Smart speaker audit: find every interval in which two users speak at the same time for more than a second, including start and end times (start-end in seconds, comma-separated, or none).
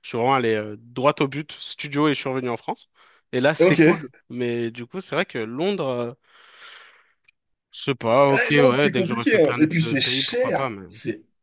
8.3-10.9